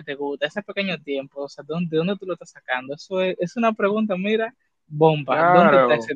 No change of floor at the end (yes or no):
no